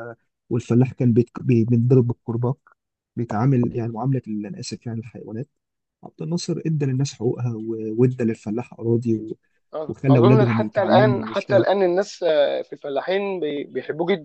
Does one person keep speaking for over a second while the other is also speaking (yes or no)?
yes